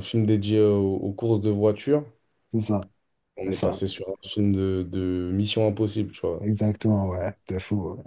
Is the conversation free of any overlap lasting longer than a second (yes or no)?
yes